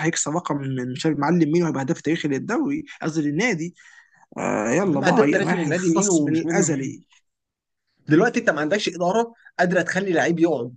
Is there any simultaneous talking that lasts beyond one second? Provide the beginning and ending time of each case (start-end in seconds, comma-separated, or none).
4.8-6.9